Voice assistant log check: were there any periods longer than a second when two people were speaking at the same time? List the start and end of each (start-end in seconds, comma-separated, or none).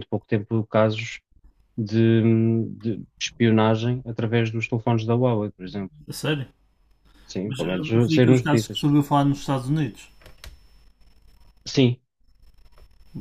7.4-8.8